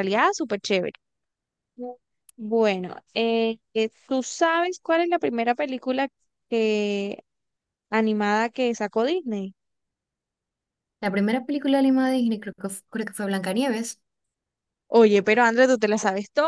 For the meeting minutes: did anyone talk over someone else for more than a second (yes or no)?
no